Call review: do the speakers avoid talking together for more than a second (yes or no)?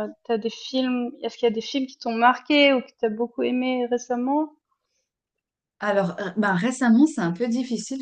yes